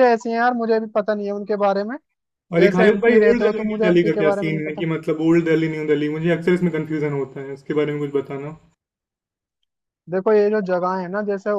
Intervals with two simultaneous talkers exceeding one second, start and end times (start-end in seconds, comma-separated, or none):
2.6-4.8